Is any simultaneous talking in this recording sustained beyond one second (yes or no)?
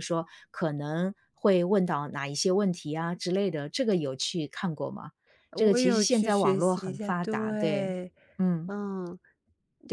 yes